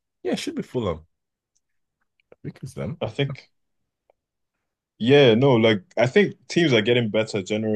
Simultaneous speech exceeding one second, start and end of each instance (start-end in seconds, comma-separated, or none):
none